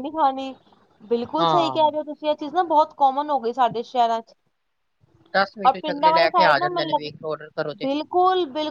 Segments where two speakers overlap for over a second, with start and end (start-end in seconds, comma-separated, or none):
5.7-7.1